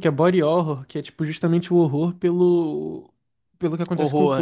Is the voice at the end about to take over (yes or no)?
yes